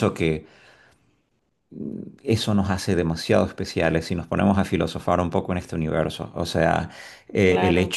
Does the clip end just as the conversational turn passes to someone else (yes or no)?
no